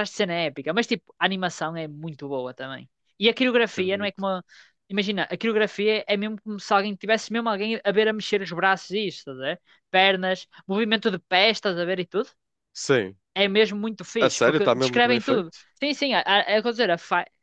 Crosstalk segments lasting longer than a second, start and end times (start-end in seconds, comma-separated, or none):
14.2-15.6